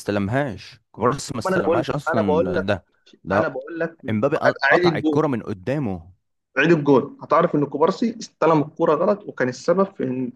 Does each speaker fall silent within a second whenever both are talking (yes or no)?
no